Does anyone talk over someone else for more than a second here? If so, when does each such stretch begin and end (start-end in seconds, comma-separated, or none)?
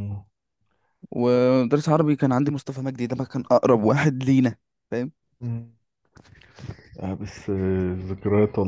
none